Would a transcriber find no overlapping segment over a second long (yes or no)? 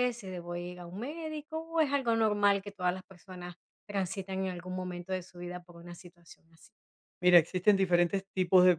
yes